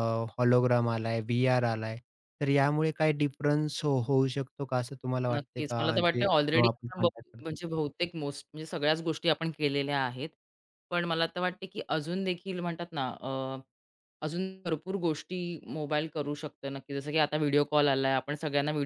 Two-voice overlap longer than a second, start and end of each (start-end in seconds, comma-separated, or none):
5.3-7.5